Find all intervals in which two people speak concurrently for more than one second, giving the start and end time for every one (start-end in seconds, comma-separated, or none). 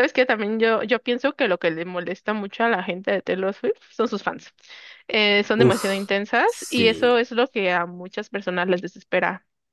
5.5-7.2